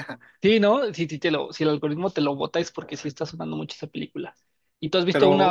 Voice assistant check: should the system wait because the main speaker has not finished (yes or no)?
yes